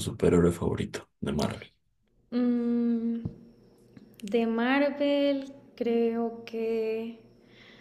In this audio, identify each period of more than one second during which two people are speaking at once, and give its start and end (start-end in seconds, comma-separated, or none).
none